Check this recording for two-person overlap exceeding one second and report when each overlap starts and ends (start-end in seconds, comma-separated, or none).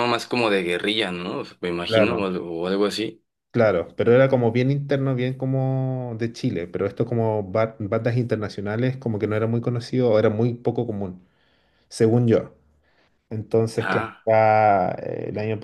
none